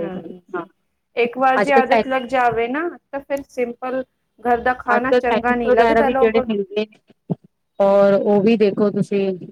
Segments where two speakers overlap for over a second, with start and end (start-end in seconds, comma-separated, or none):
4.9-6.6